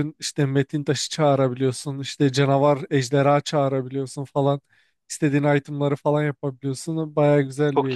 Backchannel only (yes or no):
no